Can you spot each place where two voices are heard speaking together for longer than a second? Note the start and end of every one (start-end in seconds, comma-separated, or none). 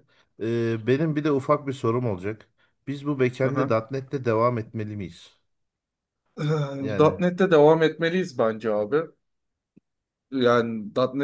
none